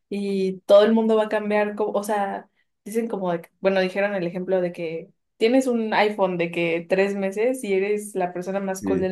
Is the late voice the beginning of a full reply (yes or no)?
no